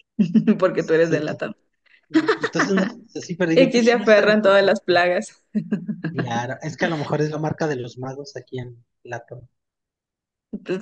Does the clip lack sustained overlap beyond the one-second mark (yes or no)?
no